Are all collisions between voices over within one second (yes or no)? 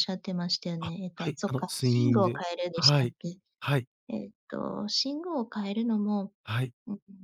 no